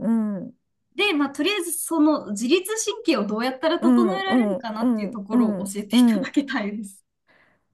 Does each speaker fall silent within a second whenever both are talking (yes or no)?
no